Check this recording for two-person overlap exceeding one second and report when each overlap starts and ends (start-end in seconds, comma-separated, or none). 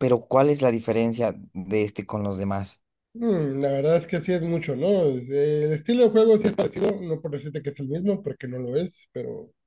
none